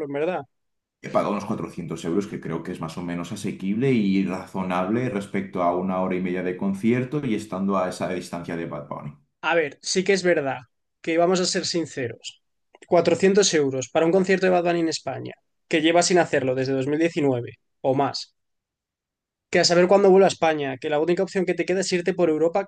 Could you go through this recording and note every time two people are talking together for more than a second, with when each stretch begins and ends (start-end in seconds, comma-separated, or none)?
none